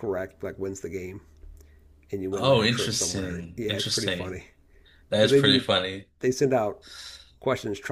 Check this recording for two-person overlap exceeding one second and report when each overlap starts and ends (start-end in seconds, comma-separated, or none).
2.3-4.4